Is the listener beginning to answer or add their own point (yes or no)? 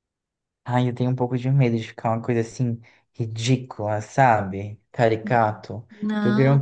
no